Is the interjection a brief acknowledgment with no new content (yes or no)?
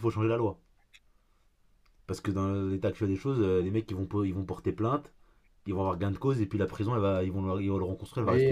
no